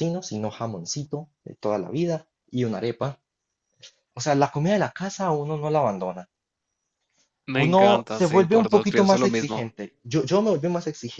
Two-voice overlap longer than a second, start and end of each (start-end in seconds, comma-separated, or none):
7.5-9.7